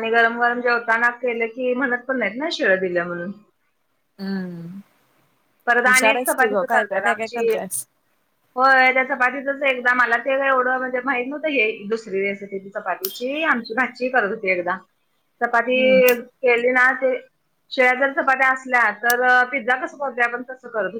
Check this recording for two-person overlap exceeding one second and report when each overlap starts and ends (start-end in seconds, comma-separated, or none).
5.8-7.6